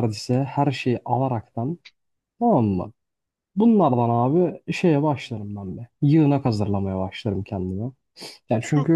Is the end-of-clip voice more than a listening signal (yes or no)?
no